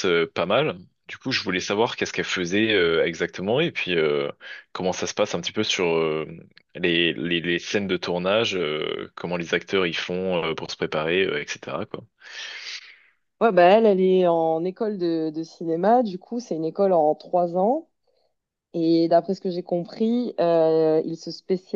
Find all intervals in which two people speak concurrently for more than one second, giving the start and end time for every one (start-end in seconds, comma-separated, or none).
none